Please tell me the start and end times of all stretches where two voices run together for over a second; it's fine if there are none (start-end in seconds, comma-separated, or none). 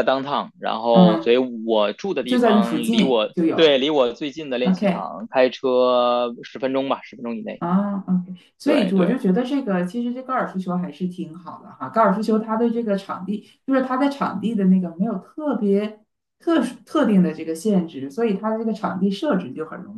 2.3-3.8